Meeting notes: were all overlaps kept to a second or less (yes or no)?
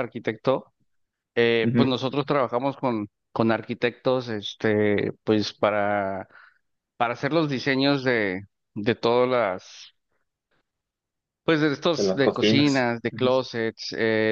no